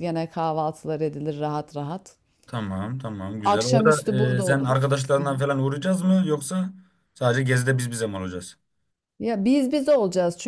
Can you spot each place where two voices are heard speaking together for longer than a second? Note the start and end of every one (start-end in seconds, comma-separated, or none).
3.4-5.0